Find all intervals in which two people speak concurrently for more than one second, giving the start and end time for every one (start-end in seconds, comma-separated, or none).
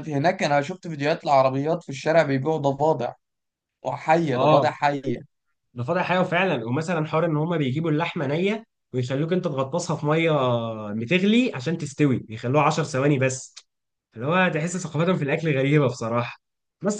none